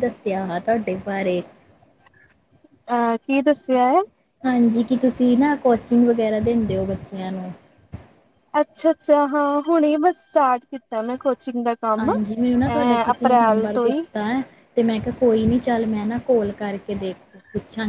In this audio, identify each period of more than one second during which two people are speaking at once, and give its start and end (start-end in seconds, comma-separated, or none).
12.0-14.0